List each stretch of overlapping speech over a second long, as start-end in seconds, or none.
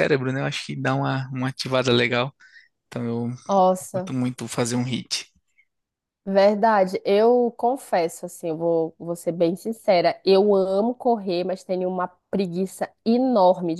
none